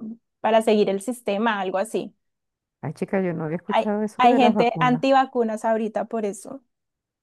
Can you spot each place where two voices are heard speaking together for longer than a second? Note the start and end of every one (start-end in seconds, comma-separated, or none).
3.7-5.0